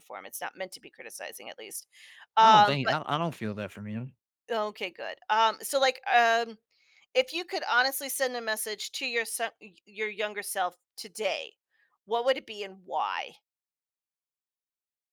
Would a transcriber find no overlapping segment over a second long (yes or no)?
yes